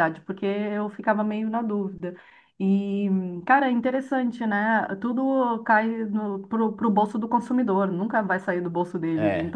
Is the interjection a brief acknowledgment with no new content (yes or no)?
yes